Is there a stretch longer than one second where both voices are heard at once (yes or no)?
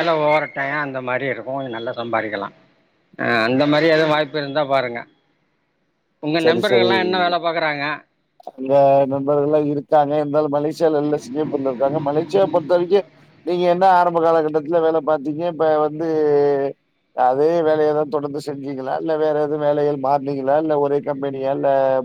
no